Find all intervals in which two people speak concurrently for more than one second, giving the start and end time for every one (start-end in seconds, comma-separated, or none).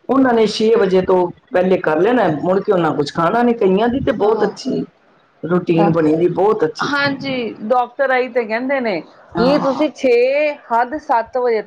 none